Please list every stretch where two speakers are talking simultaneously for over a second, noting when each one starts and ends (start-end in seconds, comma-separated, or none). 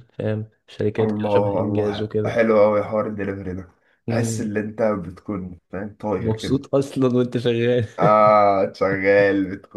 1.0-2.4